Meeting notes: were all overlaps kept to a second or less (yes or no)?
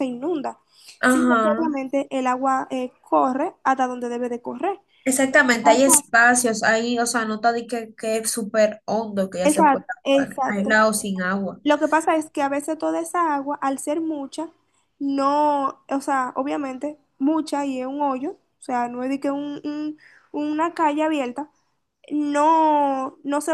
no